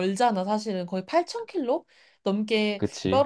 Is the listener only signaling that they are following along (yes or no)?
yes